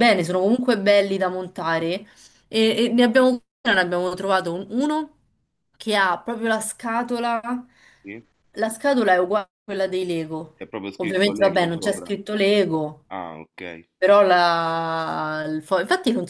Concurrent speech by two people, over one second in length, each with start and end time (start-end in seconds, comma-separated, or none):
11.0-12.2